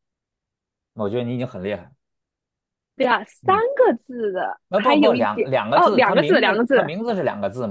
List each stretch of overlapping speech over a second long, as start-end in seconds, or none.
4.7-6.8